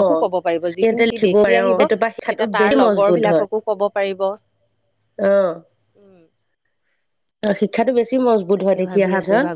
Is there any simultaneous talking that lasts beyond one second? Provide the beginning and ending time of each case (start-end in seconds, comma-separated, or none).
0.8-2.8